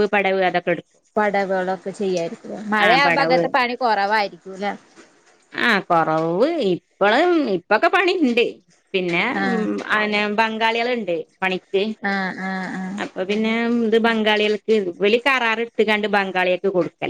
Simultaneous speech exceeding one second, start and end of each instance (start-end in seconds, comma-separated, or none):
none